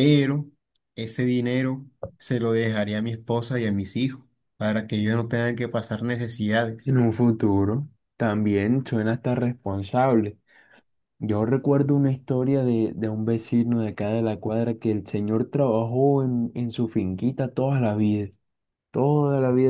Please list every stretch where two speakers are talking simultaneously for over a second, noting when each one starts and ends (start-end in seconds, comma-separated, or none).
none